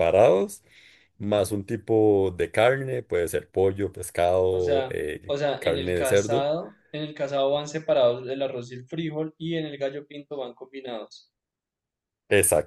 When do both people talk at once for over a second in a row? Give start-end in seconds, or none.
4.5-6.5